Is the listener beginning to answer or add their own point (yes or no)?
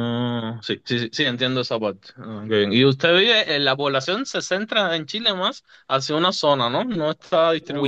yes